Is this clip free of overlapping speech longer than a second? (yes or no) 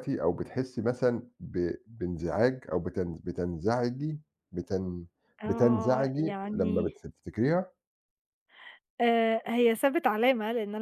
no